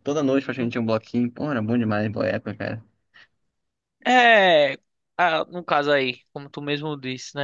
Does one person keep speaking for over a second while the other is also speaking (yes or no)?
no